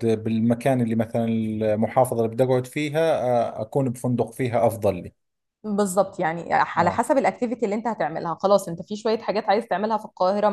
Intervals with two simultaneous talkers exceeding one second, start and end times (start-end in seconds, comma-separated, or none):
none